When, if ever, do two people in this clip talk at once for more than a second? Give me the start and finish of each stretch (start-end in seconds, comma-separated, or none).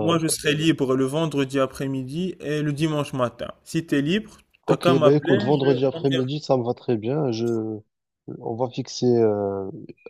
4.7-6.2